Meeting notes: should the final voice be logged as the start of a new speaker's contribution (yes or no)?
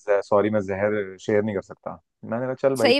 yes